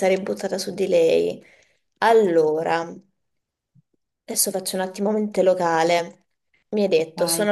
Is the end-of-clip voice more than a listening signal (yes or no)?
no